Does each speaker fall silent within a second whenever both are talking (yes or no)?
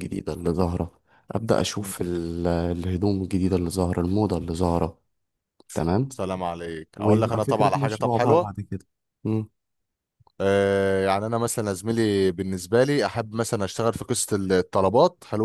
no